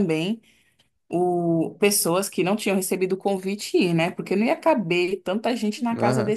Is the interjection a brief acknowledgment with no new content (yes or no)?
no